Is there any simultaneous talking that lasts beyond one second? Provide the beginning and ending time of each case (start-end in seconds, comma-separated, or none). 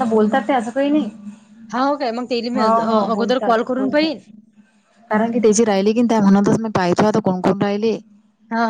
2.5-4.2